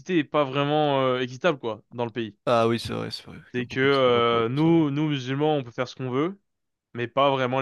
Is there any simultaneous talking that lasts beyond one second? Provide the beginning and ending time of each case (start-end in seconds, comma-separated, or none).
3.5-4.8